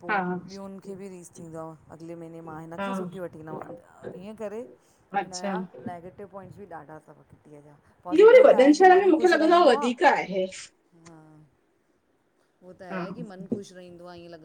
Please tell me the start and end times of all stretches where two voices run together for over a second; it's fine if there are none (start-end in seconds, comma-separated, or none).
8.2-9.8